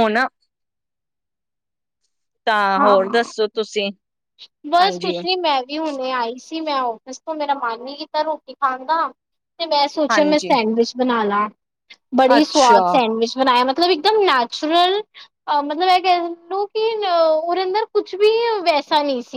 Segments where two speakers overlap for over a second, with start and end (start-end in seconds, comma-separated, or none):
none